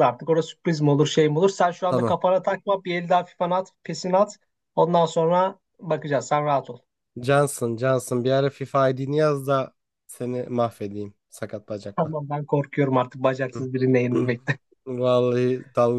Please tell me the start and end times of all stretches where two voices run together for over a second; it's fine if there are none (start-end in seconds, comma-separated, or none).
none